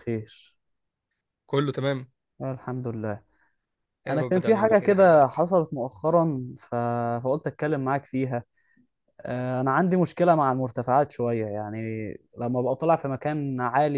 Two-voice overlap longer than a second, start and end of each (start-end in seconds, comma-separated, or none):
4.1-5.4